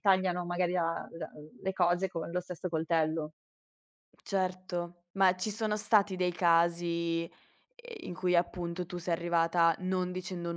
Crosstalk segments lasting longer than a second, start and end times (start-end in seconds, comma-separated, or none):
none